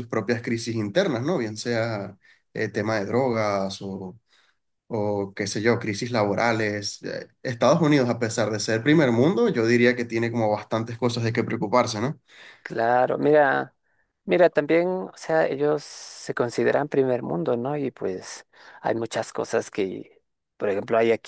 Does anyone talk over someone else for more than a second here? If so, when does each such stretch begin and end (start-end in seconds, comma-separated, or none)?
none